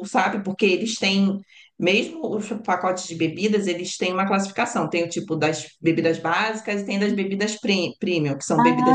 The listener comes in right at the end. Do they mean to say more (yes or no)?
yes